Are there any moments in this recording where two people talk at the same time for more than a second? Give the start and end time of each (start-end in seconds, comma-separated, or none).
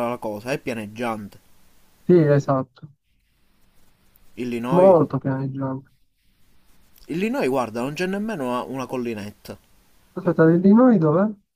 none